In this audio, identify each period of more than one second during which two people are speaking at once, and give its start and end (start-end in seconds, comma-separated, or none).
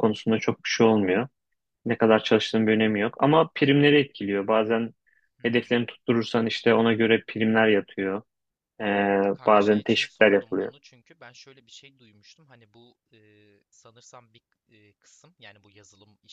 9.5-10.7